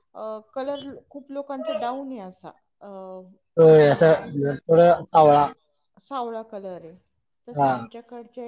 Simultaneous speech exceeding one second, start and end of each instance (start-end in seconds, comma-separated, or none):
none